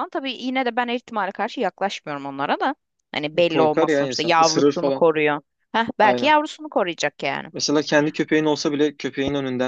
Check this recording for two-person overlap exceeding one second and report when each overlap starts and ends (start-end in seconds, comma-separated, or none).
3.5-5.1